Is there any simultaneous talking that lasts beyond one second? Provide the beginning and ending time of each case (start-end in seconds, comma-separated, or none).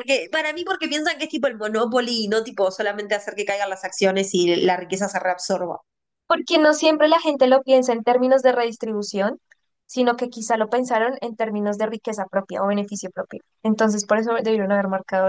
none